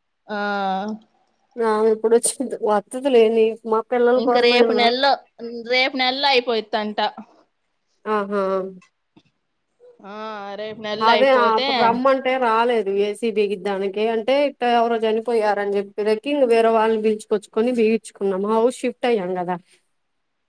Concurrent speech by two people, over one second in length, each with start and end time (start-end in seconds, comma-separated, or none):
none